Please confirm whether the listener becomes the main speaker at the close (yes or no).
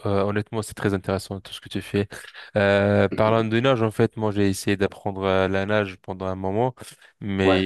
no